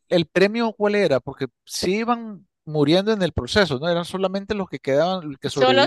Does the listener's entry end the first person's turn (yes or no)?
yes